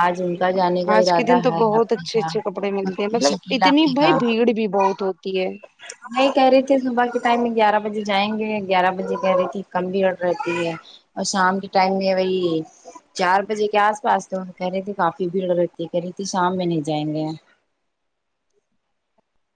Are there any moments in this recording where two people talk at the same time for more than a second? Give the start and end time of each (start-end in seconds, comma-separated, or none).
1.0-4.2